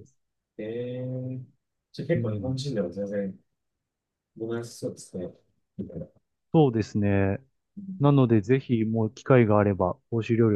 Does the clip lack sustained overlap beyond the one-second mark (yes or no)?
yes